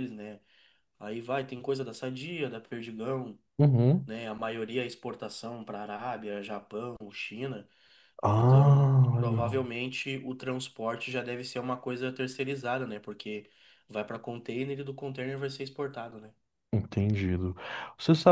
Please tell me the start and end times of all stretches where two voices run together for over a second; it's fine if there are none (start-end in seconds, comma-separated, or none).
8.2-9.6